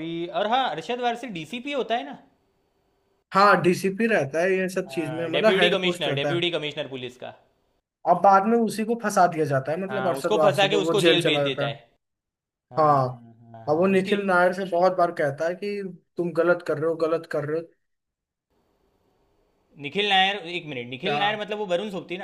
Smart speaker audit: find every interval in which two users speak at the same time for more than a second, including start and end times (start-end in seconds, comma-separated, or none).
4.9-6.5, 9.9-11.8